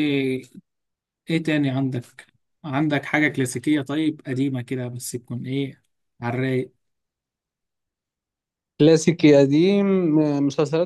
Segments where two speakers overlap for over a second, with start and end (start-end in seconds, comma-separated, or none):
none